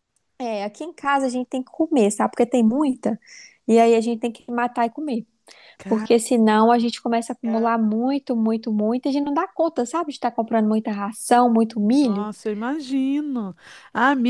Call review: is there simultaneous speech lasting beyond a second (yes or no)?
no